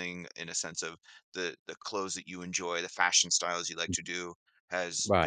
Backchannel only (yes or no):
yes